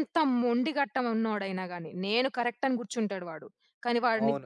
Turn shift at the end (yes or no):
yes